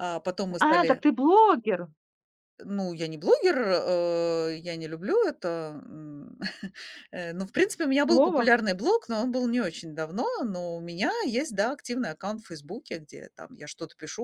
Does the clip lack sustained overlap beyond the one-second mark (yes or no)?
yes